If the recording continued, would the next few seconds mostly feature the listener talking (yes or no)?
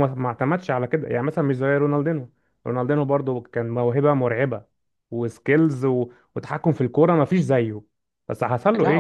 no